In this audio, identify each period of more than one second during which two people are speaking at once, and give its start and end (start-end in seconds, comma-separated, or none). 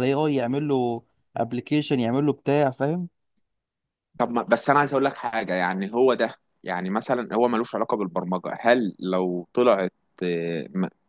none